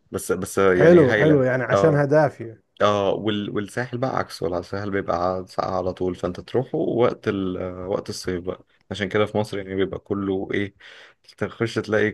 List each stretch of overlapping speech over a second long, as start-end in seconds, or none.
0.7-2.1